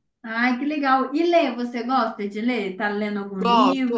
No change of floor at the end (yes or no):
no